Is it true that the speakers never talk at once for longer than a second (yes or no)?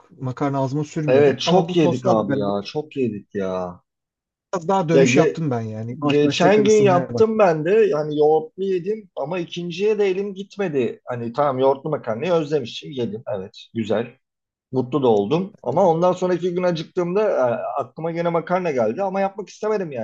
no